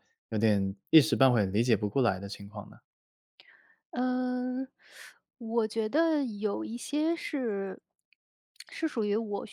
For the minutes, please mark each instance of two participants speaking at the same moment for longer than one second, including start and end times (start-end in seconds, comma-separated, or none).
none